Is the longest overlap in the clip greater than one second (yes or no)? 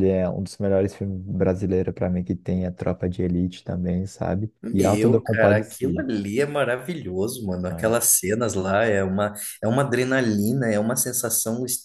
yes